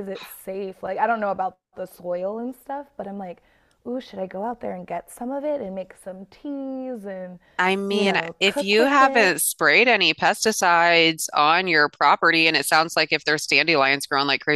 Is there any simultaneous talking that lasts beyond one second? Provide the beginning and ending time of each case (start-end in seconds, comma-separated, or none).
7.9-9.4